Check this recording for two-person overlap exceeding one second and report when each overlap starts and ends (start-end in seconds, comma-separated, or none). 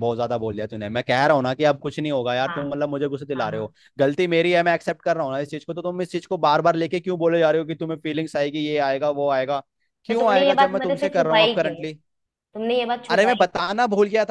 10.1-11.7